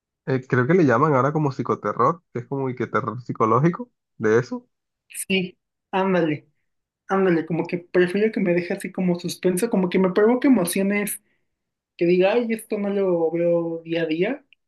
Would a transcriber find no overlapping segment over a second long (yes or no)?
yes